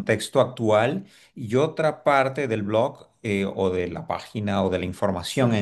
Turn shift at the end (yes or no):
no